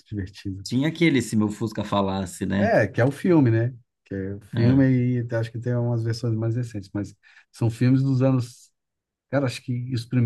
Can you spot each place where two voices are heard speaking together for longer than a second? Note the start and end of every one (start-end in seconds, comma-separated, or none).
none